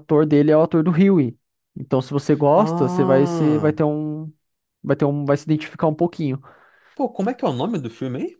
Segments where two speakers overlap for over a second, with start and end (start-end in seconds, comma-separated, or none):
2.5-3.8